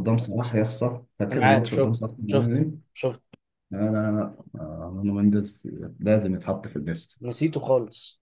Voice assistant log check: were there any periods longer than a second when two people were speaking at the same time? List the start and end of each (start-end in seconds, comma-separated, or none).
1.3-2.9